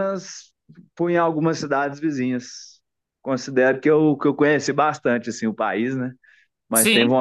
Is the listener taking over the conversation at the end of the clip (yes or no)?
no